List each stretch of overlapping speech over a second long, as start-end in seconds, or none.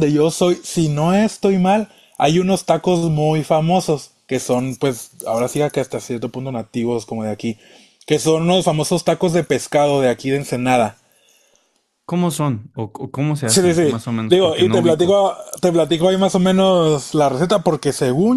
13.4-15.2